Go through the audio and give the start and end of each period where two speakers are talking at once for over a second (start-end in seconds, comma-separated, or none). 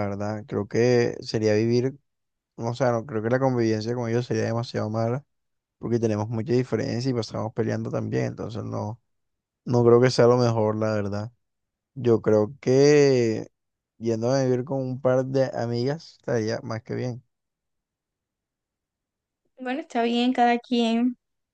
none